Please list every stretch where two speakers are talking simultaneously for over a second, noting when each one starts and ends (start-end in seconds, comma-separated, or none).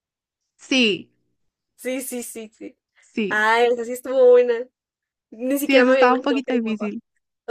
5.6-6.9